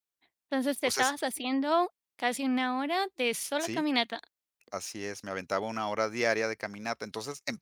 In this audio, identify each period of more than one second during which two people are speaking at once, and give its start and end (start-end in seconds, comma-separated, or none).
none